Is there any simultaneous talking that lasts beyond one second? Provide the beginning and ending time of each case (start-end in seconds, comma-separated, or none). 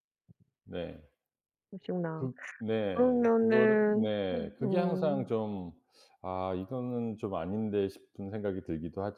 2.9-5.3